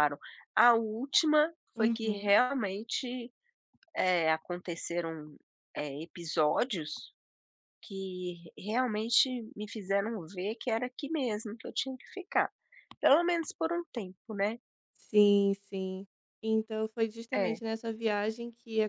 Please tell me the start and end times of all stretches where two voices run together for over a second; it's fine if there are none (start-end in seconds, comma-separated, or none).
none